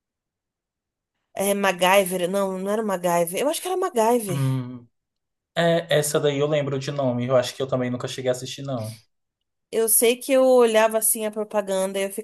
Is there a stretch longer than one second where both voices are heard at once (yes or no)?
no